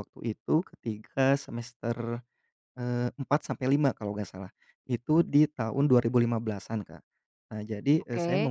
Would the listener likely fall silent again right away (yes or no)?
yes